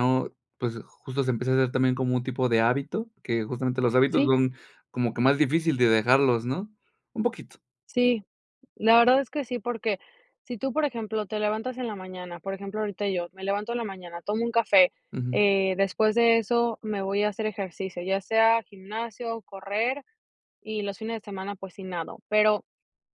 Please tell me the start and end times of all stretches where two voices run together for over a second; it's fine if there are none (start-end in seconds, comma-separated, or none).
none